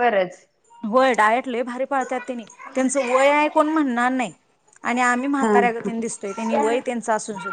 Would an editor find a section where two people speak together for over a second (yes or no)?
yes